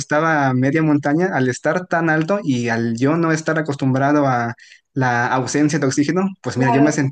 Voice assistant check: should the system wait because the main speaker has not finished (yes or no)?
yes